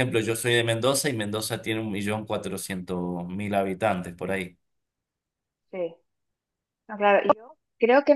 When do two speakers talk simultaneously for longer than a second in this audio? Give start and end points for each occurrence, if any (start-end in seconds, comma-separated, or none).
none